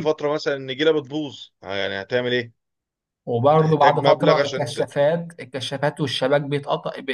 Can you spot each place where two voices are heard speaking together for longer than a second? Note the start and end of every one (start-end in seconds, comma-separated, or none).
3.6-4.8